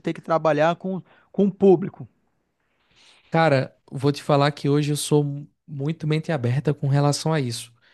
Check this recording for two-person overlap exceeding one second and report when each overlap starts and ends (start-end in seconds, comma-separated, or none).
none